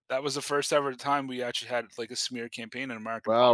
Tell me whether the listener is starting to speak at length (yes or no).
yes